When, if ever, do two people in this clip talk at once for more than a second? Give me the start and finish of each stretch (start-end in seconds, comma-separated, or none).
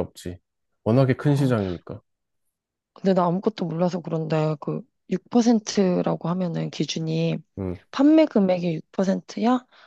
none